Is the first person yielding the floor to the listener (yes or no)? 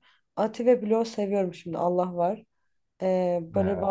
no